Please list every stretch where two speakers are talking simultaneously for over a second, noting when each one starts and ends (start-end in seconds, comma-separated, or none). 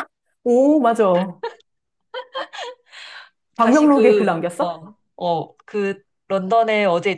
3.6-4.8